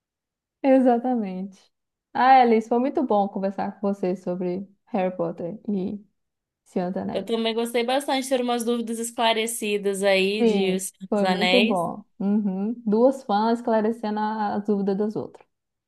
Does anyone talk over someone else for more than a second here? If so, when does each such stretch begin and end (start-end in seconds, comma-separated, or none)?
10.4-11.9